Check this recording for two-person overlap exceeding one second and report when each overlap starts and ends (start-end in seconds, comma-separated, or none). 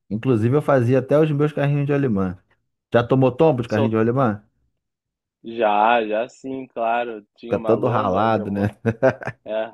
7.5-8.7